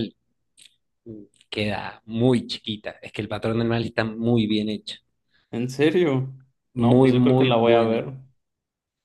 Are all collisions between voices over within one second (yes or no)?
no